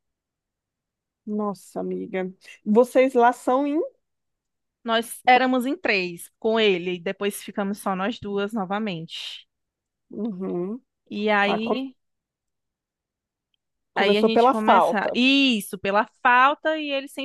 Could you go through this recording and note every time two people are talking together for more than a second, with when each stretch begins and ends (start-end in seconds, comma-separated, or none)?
14.0-15.2